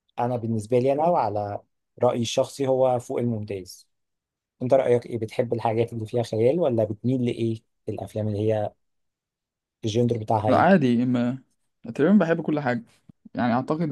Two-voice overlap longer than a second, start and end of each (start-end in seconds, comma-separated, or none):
none